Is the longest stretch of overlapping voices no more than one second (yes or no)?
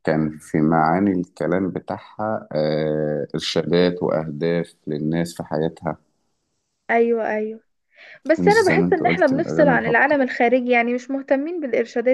no